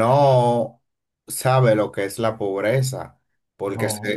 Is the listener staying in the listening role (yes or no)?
yes